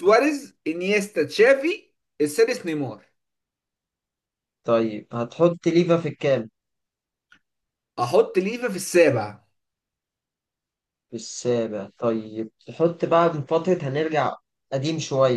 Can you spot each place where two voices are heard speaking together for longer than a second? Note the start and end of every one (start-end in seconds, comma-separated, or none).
none